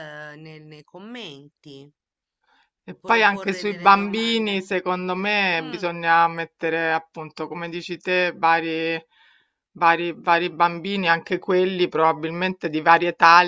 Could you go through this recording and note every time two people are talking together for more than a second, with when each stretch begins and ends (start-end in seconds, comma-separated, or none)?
3.0-4.6